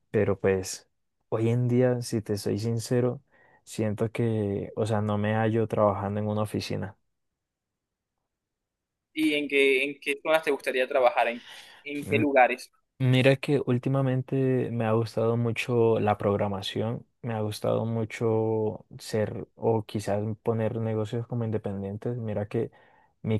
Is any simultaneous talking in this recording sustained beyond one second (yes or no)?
no